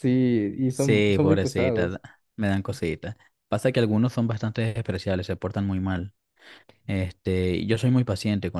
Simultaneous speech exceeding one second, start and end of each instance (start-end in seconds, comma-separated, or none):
0.7-2.0